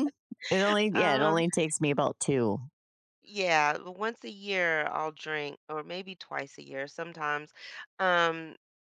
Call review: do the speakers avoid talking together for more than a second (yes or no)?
yes